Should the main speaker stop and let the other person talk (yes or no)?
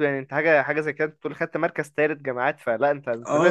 yes